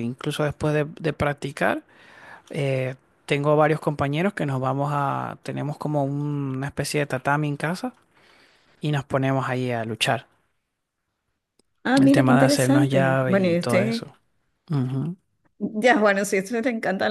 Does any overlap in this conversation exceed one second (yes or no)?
yes